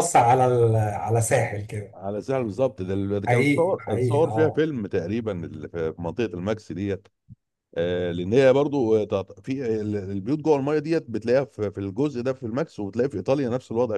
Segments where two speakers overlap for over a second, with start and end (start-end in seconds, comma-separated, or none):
3.3-4.7